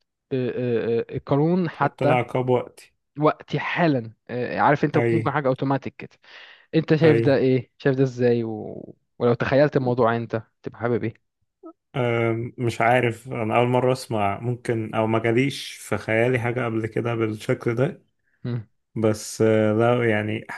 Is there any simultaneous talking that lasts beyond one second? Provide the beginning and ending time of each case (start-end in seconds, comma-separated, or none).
none